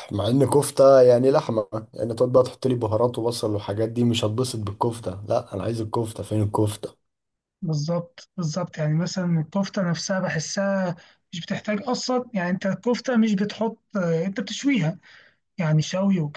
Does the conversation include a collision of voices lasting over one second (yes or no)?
no